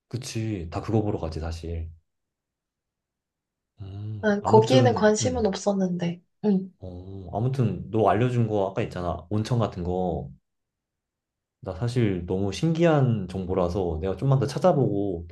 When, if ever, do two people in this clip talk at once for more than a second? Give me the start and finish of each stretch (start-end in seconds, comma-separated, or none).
4.2-5.5